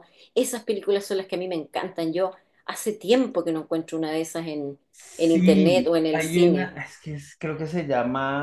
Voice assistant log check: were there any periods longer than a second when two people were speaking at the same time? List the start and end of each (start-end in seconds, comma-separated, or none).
5.2-6.8